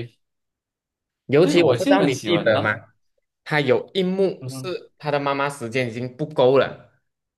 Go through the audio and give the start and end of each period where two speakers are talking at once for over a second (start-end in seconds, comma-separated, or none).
1.4-2.8